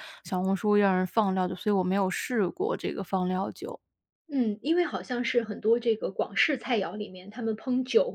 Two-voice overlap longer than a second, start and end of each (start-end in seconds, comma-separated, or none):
none